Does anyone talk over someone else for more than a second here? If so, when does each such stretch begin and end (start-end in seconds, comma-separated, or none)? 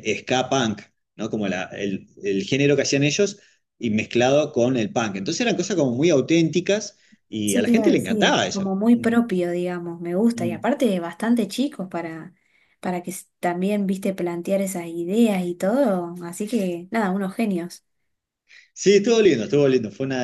7.5-9.2